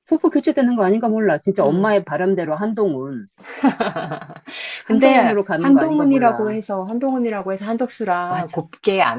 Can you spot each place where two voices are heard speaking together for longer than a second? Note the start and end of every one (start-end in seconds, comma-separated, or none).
4.9-6.6